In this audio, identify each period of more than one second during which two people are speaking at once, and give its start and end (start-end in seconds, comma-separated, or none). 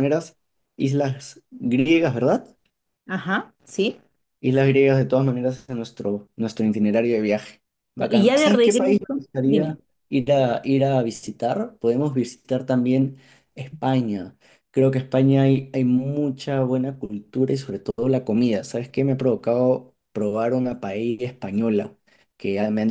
8.1-9.8